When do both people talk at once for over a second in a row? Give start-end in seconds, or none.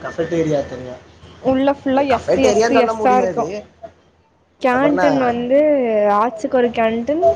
1.9-3.5